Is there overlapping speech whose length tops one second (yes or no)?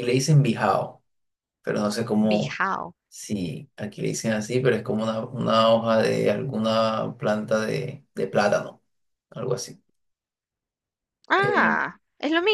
no